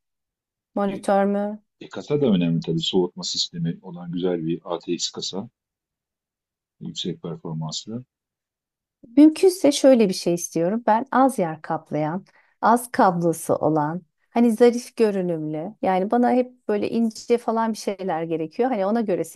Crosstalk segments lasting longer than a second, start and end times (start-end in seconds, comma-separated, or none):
none